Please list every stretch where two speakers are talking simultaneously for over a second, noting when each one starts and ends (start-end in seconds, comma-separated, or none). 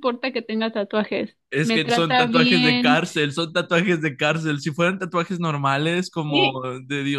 1.5-3.0